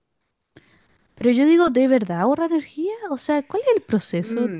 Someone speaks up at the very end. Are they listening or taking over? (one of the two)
taking over